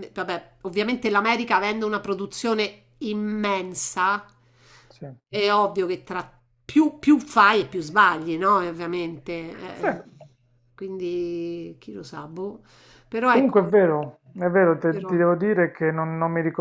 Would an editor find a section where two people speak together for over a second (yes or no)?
no